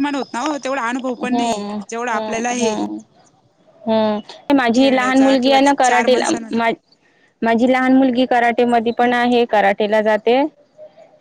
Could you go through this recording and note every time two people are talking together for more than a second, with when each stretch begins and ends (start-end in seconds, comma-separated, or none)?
4.7-6.5